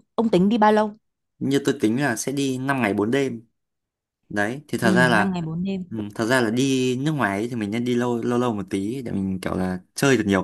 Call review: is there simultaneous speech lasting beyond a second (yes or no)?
no